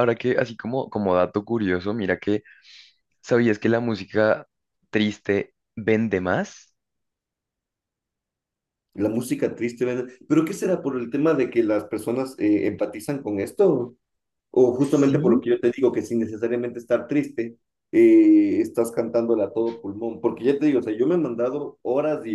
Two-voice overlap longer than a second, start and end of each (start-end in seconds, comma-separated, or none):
none